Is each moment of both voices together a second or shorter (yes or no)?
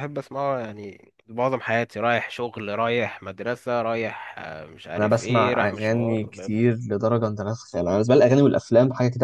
no